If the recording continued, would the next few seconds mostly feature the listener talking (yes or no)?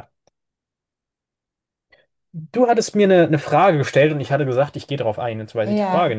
yes